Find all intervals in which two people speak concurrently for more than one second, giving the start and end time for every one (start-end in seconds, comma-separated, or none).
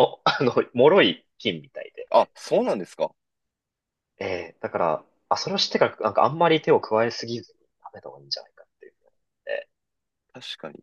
none